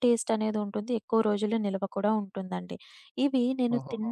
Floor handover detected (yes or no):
no